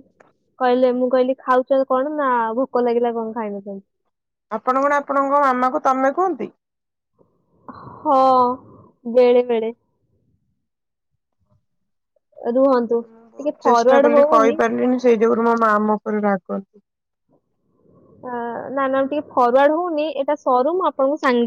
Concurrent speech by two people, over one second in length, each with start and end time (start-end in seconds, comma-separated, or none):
13.1-14.6